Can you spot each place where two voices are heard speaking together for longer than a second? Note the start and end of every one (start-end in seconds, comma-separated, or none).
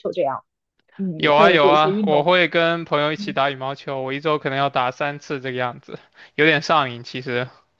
1.1-2.4